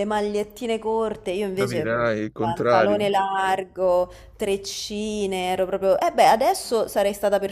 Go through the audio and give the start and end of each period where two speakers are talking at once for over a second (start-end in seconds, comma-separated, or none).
1.6-3.1